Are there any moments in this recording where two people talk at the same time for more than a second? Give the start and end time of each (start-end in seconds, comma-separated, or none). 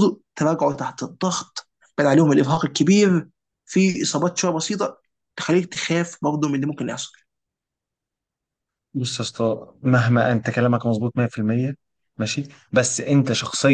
none